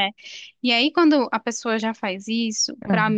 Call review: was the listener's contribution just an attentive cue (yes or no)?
yes